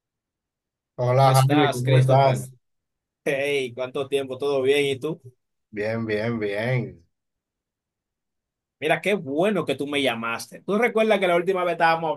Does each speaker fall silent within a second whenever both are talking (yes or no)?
no